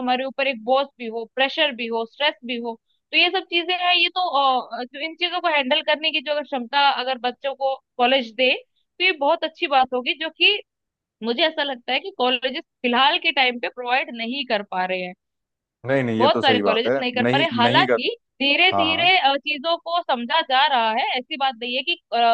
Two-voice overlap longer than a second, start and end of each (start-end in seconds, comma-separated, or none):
16.2-18.0